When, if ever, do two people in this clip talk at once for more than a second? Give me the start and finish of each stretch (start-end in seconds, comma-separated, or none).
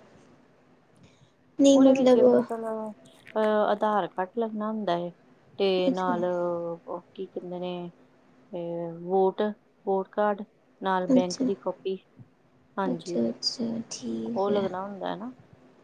none